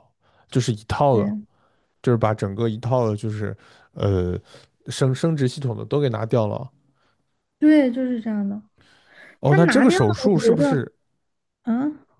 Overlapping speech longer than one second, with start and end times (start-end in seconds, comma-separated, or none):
9.4-10.8